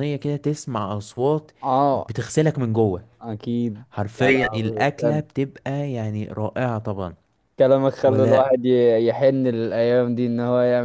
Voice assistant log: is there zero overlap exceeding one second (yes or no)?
no